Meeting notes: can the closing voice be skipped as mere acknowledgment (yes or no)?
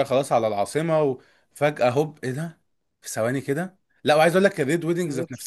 yes